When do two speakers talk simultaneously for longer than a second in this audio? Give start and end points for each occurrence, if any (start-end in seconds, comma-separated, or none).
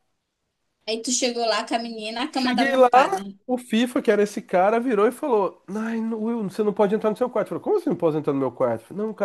none